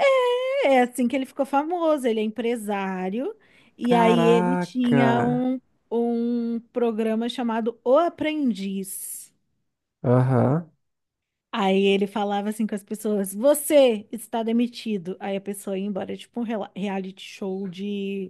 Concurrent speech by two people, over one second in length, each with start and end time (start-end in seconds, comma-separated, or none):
3.9-5.1